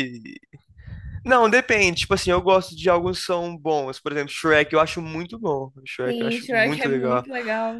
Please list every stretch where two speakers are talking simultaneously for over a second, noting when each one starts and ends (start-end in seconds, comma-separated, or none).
6.1-7.3